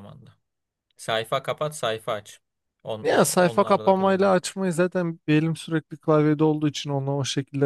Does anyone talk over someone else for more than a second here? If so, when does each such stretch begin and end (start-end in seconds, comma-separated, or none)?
3.0-4.4